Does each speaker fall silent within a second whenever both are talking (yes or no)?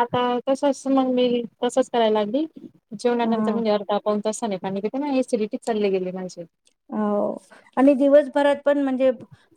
yes